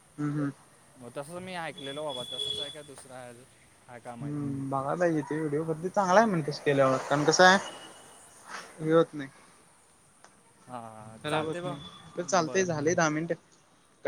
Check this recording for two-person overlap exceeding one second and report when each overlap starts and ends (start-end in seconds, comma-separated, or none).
none